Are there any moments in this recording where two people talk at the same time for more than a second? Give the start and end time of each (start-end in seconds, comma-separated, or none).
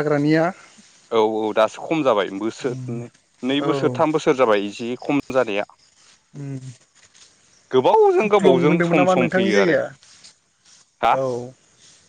8.2-9.8